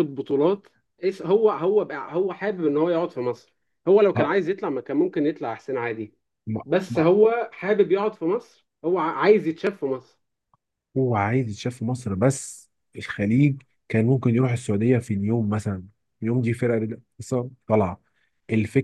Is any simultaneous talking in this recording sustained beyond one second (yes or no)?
no